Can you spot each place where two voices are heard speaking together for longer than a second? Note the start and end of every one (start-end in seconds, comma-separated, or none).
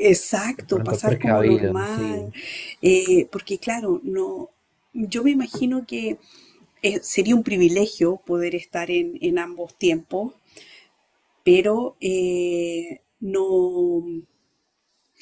0.6-2.3